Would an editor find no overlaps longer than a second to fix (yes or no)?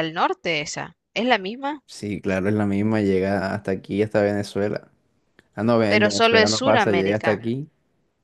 no